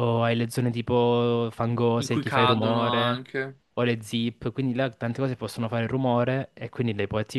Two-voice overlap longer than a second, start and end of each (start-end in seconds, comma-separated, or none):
2.0-3.2